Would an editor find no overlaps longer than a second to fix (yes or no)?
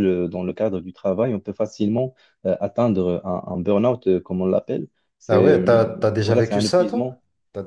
no